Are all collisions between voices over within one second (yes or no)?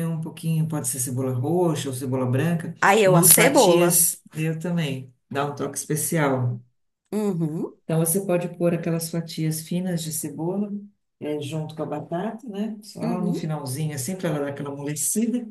no